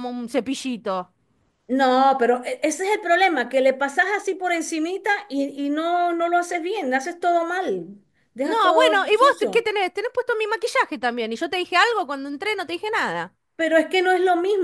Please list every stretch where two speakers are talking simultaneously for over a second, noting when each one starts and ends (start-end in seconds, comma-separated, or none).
8.4-9.7